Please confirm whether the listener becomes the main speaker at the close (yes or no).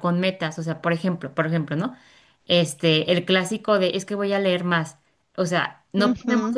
no